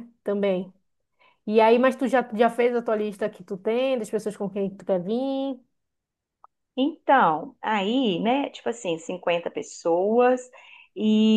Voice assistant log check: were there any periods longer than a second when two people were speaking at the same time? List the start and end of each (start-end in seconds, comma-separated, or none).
none